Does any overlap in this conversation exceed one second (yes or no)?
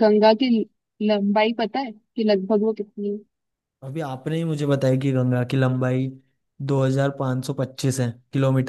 no